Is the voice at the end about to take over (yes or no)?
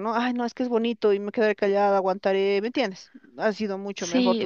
yes